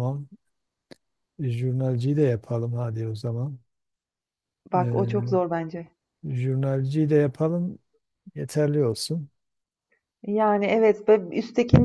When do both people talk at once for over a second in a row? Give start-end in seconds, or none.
none